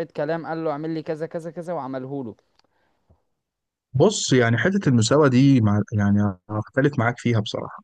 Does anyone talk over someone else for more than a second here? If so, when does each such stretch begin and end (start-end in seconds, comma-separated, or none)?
none